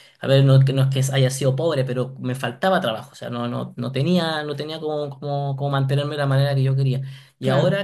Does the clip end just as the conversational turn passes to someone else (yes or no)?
no